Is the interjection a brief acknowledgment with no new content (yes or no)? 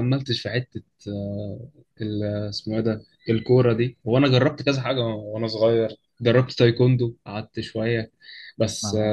yes